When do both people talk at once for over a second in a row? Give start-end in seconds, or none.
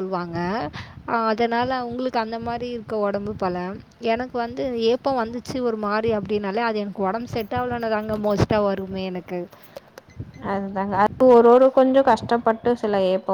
none